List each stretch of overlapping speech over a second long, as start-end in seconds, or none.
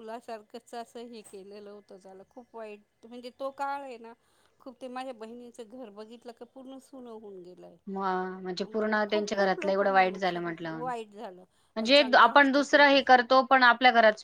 8.6-10.4